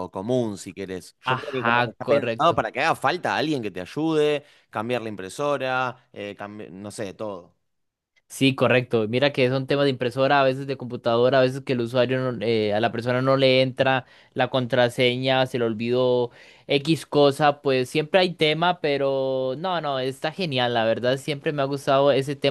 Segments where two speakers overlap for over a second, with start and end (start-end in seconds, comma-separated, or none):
1.2-2.6